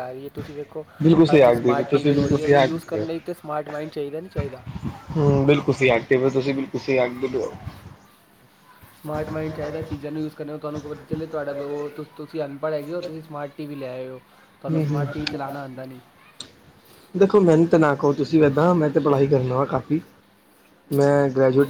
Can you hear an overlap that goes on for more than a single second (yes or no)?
yes